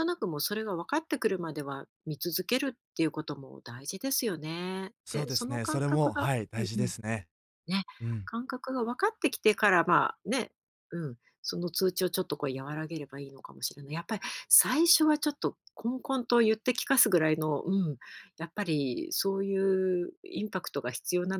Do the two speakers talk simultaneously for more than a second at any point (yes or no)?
yes